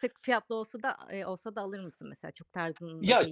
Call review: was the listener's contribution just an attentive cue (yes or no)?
no